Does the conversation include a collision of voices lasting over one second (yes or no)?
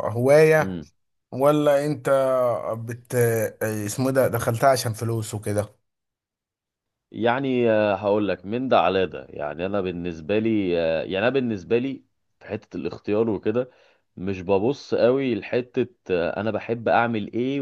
no